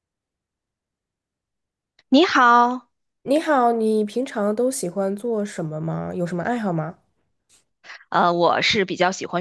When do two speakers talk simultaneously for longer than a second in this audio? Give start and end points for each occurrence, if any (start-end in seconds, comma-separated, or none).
none